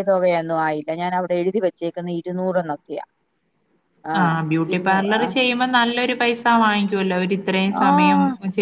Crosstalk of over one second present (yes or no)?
no